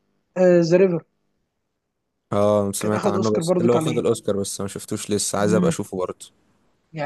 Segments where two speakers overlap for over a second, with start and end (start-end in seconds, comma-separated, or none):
2.8-4.0